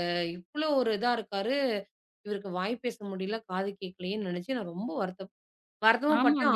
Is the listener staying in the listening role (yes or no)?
no